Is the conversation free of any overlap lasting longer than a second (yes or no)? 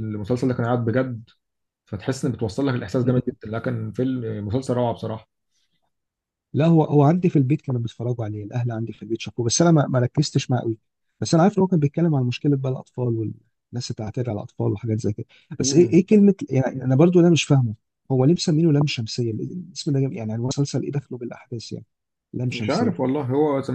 yes